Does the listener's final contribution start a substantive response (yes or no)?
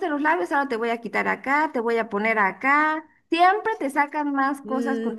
yes